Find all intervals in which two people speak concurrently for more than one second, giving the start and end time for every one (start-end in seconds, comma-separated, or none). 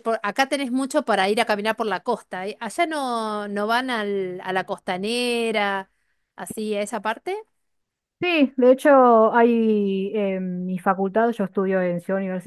none